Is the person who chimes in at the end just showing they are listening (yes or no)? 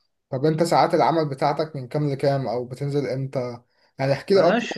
yes